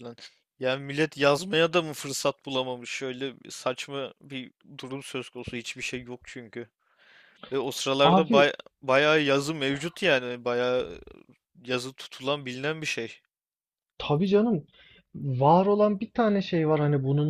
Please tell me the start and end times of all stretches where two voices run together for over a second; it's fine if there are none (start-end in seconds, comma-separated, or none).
none